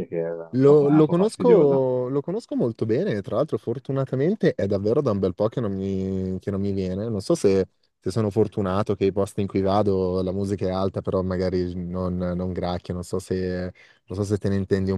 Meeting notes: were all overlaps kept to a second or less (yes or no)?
no